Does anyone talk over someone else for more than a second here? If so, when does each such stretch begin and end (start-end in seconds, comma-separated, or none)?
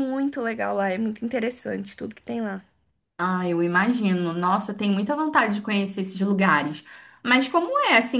none